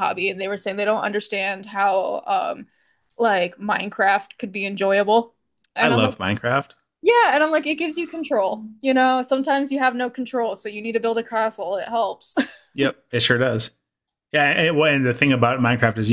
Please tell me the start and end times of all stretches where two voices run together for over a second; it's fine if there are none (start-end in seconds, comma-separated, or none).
none